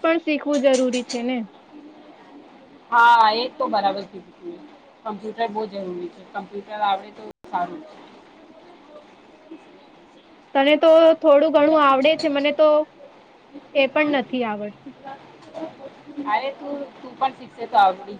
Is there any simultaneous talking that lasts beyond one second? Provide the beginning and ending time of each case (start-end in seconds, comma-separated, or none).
none